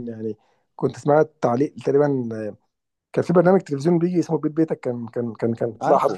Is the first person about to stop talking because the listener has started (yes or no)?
no